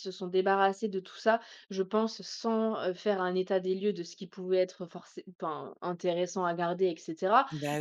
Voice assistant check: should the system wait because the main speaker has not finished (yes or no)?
yes